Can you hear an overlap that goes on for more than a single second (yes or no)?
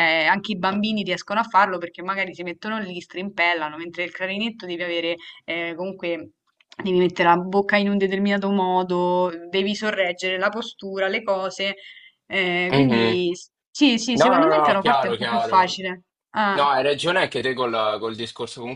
yes